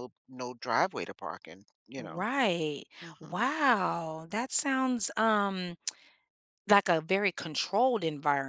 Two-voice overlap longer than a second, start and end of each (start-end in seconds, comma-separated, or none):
none